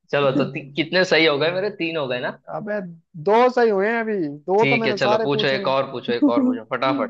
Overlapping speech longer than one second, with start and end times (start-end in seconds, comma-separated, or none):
4.6-6.6